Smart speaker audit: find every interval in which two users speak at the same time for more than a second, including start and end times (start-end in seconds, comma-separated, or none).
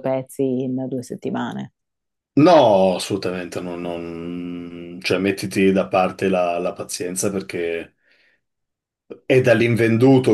none